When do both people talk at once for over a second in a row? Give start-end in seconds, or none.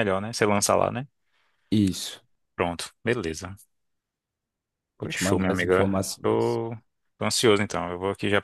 5.0-6.6